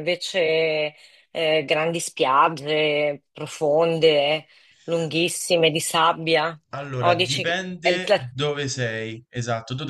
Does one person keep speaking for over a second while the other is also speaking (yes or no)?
yes